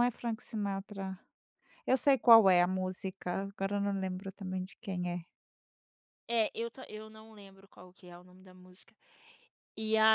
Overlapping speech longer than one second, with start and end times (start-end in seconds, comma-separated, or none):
none